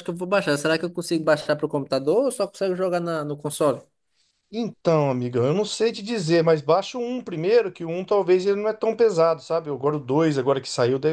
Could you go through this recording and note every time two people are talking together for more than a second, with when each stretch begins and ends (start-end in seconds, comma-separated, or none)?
none